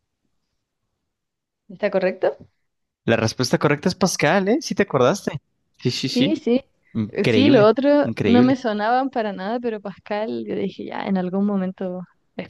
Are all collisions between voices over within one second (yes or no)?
no